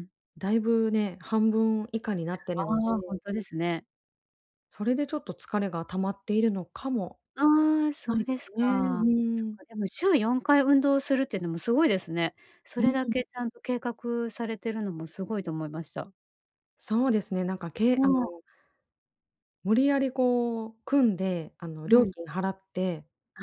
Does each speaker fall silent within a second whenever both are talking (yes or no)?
no